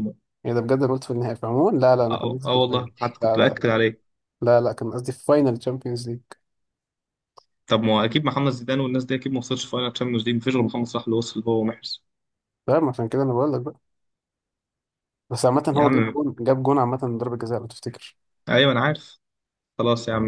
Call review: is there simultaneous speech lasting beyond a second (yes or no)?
yes